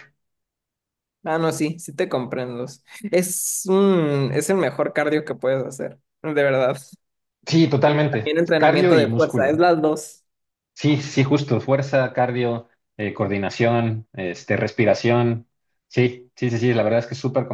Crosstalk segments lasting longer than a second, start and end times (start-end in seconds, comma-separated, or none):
7.8-9.6